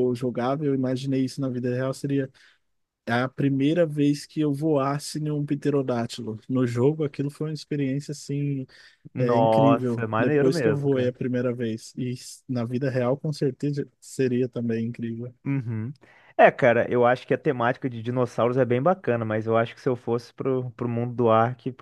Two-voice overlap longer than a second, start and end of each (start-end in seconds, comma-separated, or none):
9.2-11.1